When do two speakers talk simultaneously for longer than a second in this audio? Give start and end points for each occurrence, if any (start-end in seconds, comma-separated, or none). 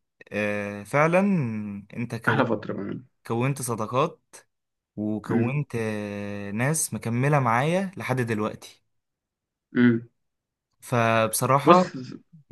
none